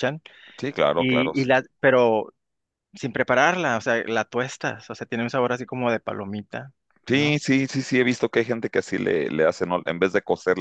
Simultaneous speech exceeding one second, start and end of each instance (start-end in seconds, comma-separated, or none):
none